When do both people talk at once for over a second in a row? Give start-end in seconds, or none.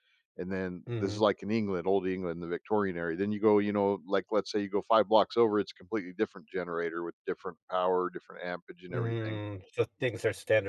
none